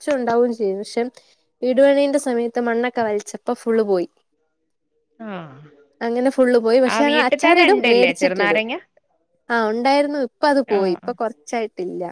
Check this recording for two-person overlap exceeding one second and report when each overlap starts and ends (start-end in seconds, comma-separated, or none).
6.9-8.6